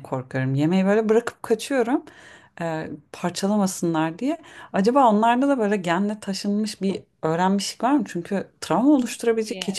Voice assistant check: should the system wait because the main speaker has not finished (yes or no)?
no